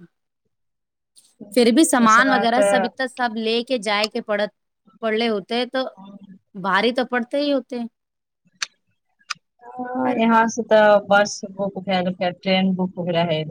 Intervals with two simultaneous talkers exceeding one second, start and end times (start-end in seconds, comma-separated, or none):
1.5-2.9